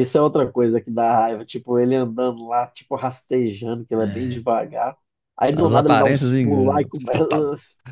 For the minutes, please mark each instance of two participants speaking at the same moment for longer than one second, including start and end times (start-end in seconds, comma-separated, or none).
5.5-7.2